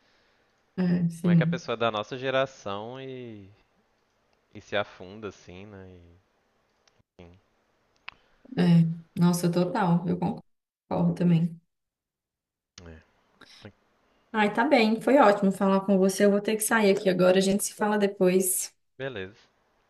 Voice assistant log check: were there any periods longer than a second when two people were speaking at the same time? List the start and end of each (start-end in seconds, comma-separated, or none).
none